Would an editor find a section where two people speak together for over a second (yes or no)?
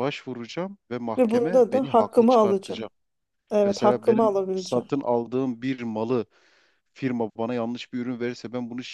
yes